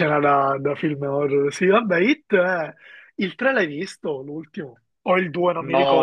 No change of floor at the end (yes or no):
no